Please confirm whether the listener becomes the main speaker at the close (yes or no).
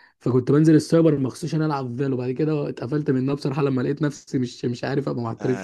yes